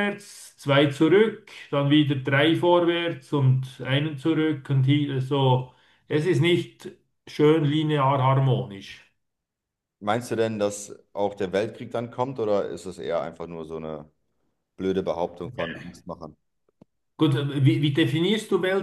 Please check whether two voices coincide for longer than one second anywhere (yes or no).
no